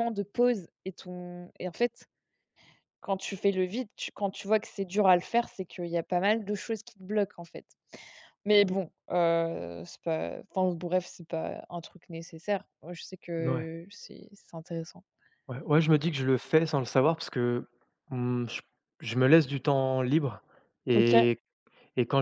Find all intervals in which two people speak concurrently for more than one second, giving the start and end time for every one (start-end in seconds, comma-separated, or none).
none